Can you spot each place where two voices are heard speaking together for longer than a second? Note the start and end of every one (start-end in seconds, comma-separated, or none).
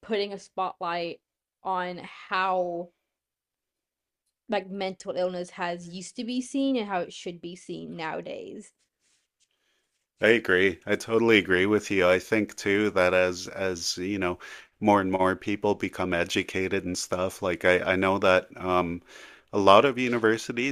none